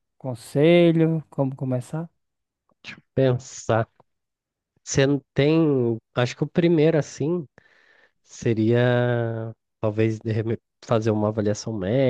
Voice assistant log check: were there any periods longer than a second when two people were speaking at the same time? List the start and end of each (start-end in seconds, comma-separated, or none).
none